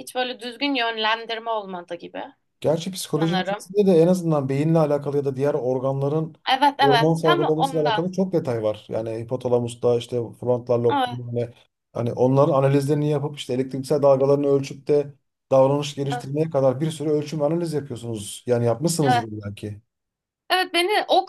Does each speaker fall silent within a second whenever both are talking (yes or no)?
no